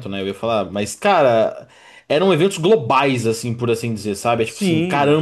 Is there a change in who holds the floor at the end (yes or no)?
no